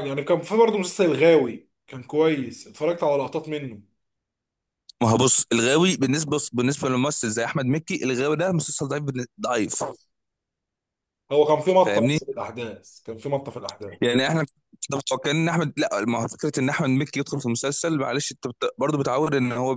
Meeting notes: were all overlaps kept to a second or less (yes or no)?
yes